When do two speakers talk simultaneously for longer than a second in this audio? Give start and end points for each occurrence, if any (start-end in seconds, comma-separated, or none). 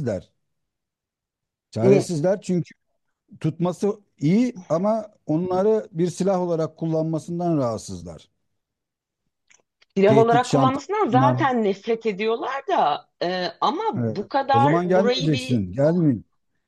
10.1-11.4, 14.0-15.6